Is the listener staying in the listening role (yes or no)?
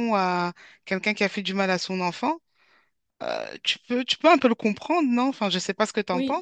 no